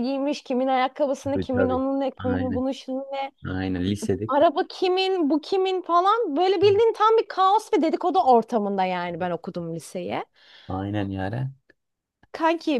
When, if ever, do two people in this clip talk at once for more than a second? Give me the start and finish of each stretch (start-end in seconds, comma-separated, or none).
1.2-2.6